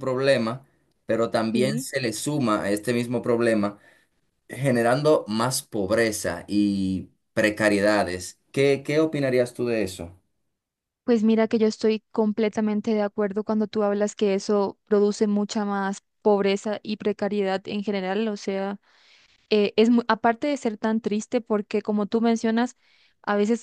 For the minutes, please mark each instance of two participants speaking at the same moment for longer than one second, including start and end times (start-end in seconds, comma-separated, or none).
none